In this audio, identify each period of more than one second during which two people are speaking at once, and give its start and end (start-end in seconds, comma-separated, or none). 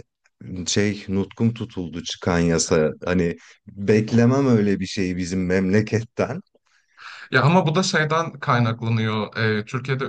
none